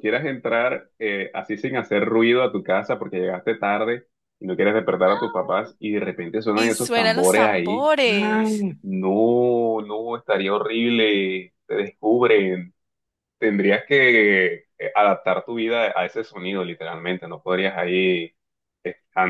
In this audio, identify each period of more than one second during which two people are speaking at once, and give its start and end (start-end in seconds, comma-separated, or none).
6.5-8.7